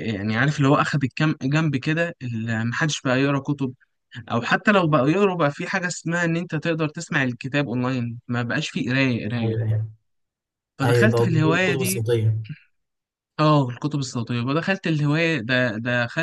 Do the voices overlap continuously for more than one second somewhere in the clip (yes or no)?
yes